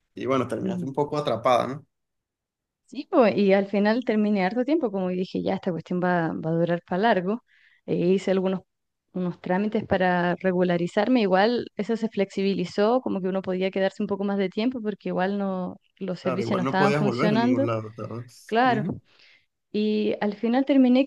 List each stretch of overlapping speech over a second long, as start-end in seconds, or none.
16.2-17.7